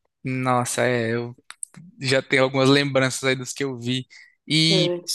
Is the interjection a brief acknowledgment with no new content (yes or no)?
yes